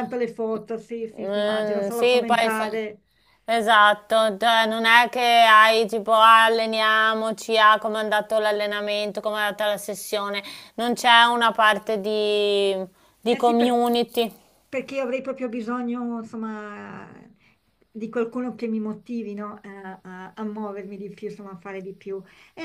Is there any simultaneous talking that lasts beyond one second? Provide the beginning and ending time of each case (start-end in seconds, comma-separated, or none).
1.2-2.7